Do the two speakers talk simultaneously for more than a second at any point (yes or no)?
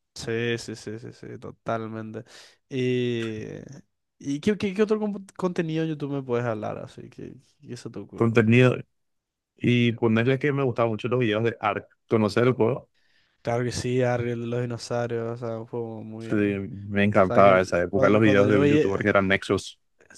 yes